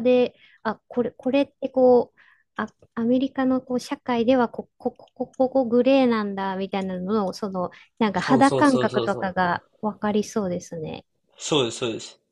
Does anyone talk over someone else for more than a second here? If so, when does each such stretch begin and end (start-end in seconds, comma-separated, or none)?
8.2-9.5